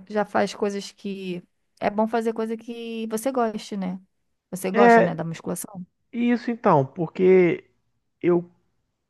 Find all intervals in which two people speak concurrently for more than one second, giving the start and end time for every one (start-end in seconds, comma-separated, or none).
none